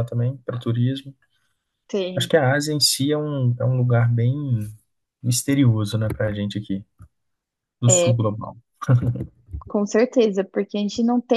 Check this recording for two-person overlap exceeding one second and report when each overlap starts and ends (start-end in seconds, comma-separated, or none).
none